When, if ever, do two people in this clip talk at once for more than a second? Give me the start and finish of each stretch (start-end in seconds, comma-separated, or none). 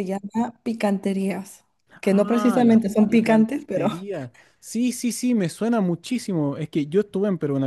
2.0-4.1